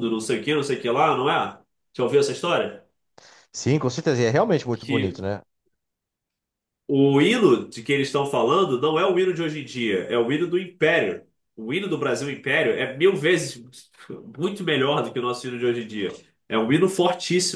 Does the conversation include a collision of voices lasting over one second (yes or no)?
no